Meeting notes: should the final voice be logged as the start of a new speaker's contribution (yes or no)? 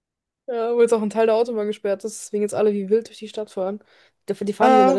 no